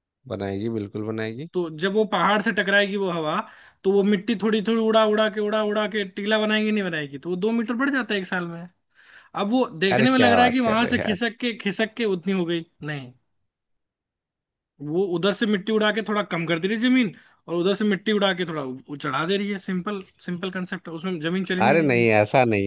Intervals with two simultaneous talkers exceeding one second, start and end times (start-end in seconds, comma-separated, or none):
9.9-11.2